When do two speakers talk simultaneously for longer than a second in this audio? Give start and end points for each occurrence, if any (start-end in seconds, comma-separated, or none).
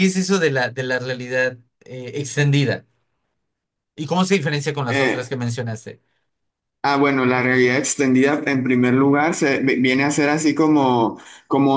none